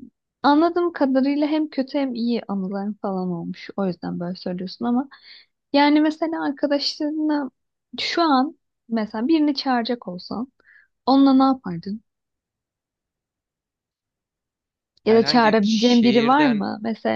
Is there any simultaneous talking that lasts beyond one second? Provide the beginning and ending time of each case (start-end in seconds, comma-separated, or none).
15.1-16.6